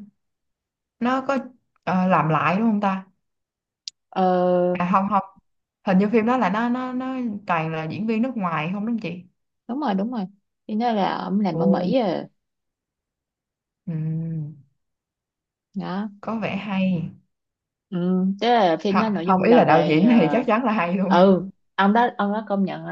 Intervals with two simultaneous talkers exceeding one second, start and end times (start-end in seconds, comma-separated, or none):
18.9-20.4